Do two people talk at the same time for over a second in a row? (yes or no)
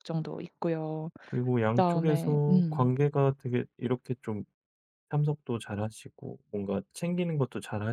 yes